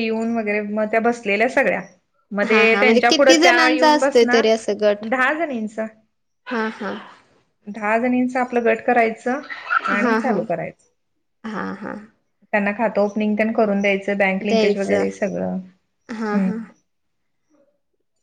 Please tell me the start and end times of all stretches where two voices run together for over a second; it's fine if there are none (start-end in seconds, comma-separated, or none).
2.5-4.5